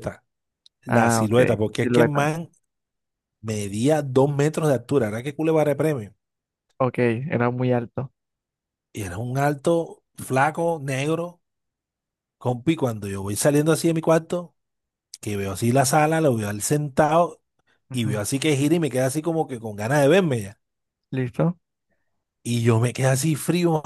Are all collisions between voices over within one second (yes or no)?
no